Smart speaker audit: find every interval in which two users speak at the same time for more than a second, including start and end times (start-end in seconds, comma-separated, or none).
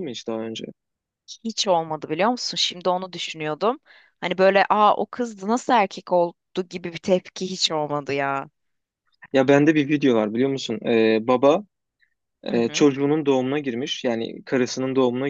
none